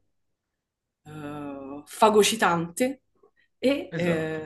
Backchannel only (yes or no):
yes